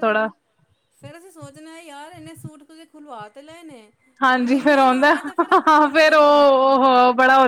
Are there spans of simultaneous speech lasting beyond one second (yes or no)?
yes